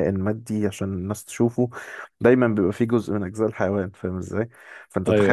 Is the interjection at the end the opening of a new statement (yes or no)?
no